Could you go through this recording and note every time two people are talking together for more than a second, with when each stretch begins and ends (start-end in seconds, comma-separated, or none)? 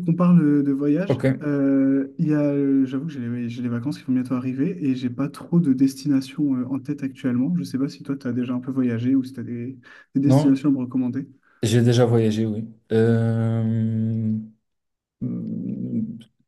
none